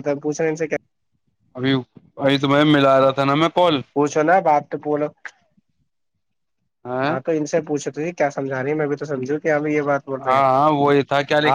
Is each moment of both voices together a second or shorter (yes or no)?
yes